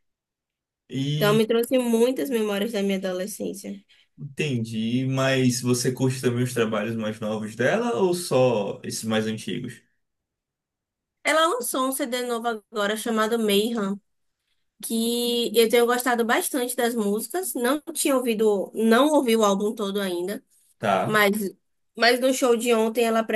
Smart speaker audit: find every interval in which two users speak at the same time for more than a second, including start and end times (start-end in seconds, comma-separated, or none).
none